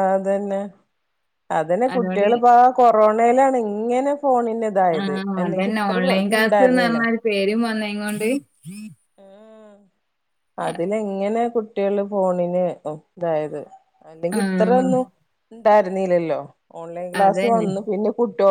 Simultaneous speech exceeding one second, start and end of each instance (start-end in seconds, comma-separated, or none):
none